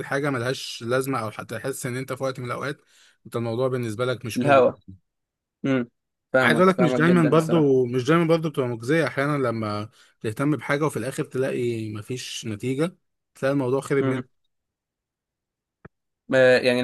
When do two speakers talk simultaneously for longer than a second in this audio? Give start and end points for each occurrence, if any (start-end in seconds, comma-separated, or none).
6.4-7.7